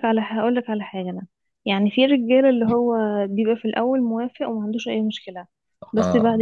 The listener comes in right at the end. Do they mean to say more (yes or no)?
no